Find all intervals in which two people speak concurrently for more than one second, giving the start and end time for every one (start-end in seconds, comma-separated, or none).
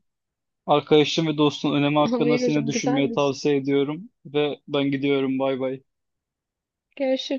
2.0-3.3